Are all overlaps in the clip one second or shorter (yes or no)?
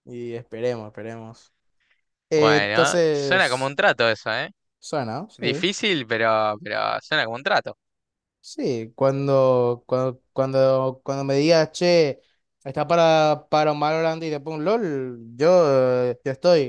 no